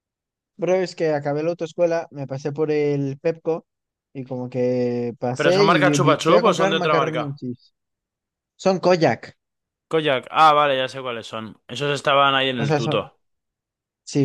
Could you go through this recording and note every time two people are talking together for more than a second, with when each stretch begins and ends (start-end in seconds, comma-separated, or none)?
5.4-7.2